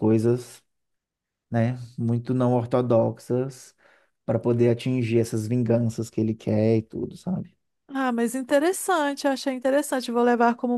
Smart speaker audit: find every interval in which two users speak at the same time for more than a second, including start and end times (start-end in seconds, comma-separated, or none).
none